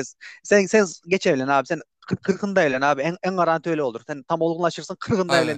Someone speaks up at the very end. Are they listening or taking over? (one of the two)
taking over